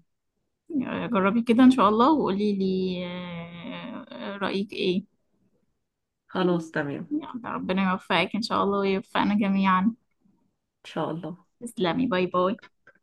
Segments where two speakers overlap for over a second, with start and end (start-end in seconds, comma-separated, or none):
none